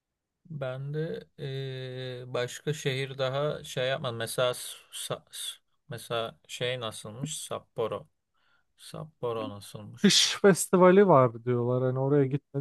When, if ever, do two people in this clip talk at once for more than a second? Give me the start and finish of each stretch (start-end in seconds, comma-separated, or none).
none